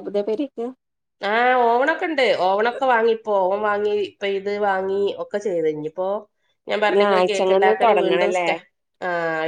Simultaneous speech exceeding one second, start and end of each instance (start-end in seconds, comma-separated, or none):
6.9-8.5